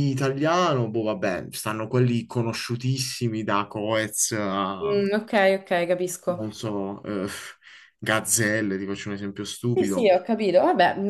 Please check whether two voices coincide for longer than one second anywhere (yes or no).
no